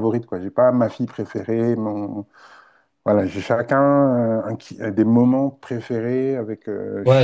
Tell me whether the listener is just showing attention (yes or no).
no